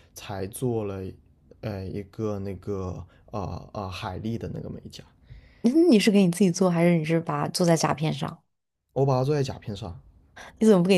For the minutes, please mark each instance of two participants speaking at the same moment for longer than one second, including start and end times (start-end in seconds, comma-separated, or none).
none